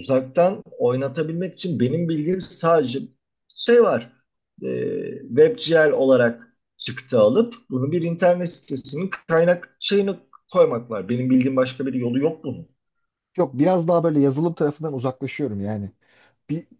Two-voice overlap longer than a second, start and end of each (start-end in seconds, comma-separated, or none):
none